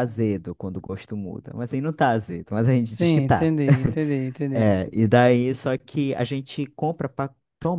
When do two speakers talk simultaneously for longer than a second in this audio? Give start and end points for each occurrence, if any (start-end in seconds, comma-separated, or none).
none